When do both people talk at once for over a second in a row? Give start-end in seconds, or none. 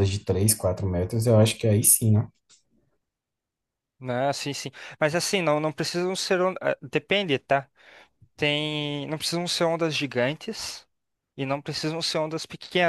none